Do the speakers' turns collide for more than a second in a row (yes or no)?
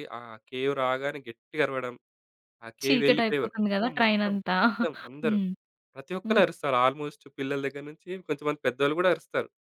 yes